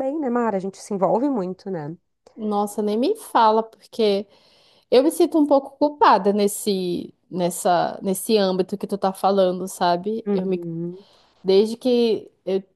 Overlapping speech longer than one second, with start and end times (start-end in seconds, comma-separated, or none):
none